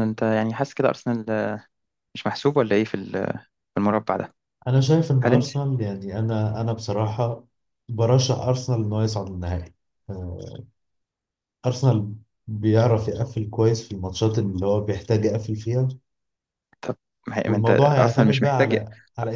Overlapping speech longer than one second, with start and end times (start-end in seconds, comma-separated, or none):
17.5-18.8